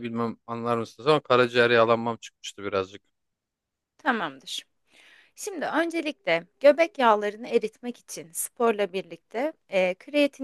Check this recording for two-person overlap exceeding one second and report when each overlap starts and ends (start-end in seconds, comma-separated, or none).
none